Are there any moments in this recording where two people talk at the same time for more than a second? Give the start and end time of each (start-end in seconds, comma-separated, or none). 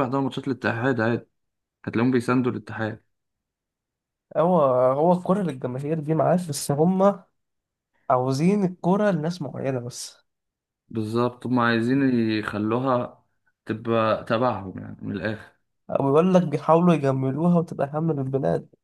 none